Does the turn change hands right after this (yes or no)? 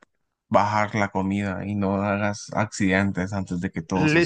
yes